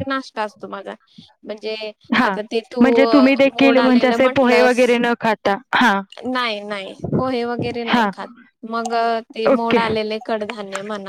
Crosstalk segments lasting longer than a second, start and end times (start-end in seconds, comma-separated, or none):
3.5-4.8